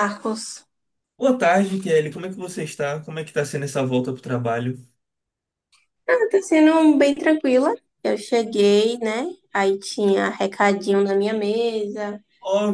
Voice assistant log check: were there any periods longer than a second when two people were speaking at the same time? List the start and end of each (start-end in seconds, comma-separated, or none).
none